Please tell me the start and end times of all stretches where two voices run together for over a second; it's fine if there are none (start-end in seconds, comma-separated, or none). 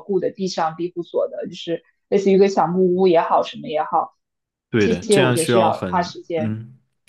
4.8-6.6